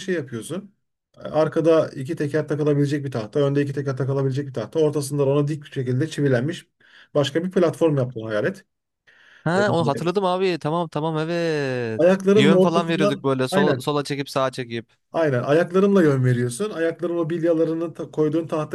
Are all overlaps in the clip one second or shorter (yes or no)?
no